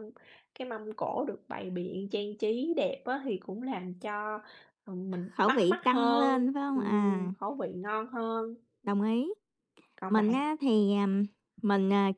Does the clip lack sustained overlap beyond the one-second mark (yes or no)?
no